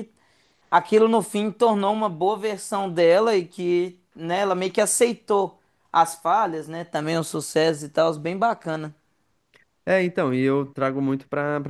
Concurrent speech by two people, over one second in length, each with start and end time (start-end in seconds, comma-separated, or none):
none